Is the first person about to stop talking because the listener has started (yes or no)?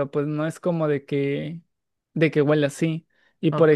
no